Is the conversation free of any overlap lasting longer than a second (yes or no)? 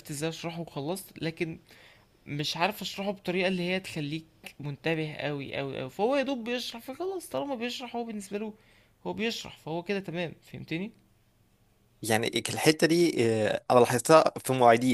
yes